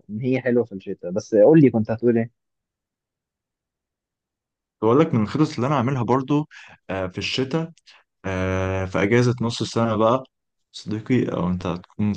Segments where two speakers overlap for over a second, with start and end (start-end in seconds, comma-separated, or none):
none